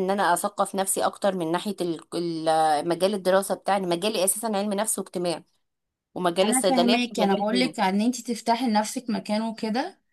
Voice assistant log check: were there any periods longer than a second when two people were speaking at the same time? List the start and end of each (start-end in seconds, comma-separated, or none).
6.4-7.7